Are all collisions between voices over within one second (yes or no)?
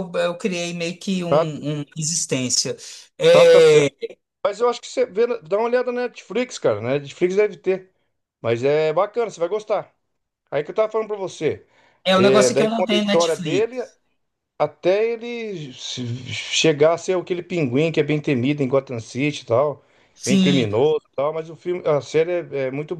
no